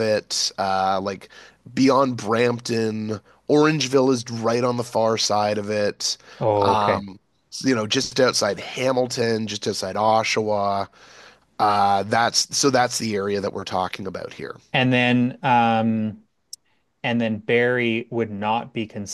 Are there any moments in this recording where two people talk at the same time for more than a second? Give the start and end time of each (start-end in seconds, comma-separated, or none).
none